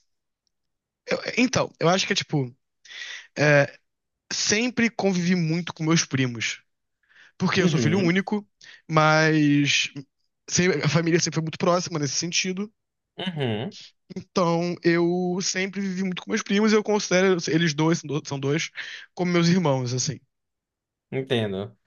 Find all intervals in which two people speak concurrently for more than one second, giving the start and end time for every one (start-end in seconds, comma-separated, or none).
none